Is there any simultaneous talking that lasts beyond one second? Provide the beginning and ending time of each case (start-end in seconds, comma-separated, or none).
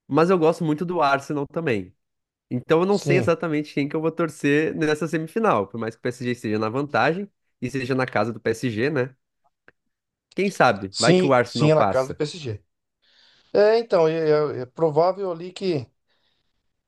10.9-12.2